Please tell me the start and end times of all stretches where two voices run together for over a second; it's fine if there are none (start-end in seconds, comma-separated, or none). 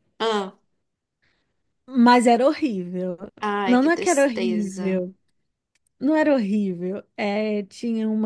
3.7-5.0